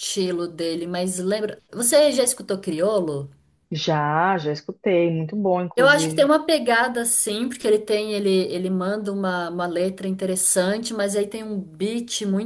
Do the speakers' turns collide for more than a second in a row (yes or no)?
no